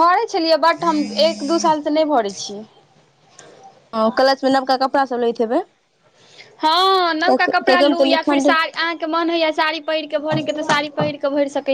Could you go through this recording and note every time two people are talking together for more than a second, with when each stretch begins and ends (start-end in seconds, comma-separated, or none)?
7.2-8.5